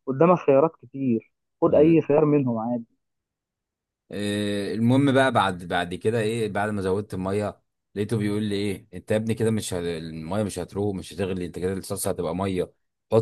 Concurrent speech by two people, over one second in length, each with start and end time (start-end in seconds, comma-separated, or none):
none